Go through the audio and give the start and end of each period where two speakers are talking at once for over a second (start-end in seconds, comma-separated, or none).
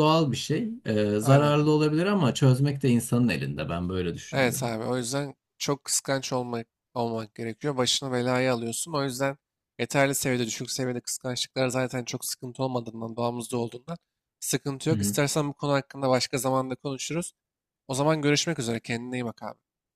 none